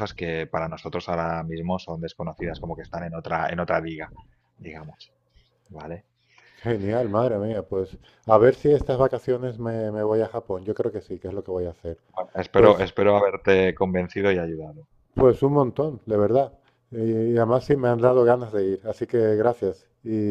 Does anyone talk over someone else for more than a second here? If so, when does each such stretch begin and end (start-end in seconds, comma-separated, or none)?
none